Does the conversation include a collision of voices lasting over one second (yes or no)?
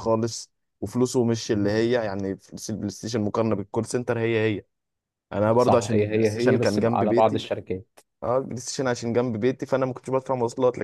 yes